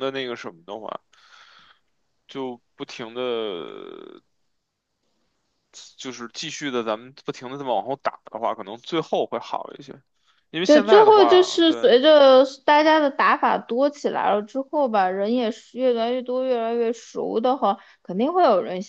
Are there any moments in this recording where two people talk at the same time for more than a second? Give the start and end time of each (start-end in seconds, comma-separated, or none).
10.6-11.9